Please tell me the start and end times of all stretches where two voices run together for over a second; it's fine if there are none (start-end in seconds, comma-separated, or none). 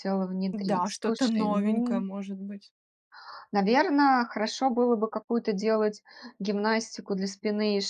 0.5-2.0